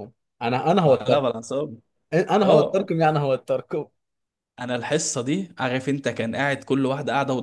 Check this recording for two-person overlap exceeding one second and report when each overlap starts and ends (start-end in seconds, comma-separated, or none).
none